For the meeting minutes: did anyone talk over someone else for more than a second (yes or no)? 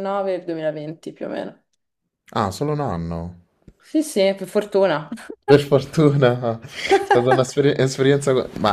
no